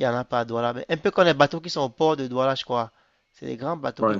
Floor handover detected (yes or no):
no